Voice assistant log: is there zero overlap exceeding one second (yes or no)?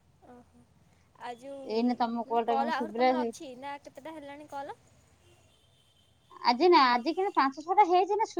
no